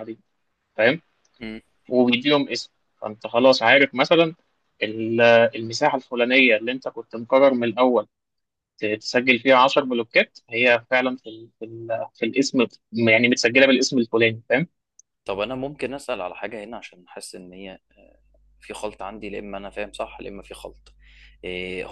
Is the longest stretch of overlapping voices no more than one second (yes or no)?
yes